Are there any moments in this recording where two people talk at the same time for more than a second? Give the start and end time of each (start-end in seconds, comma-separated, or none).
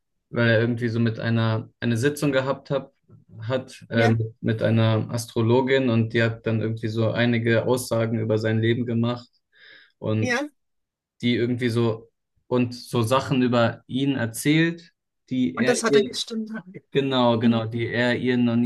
none